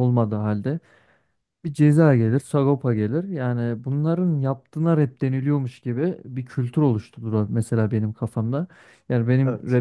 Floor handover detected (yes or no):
no